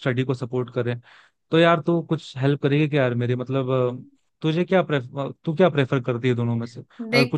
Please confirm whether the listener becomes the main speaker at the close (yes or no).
no